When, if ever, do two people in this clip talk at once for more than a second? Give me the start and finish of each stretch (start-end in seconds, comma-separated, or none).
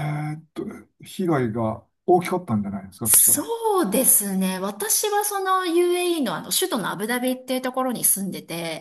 none